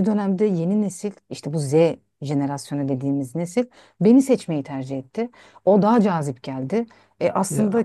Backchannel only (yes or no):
yes